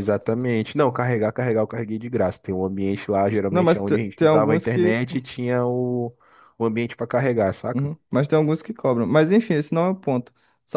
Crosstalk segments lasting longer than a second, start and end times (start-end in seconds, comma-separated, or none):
3.5-4.9